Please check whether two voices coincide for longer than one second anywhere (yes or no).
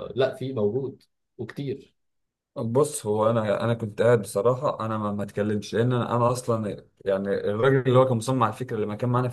no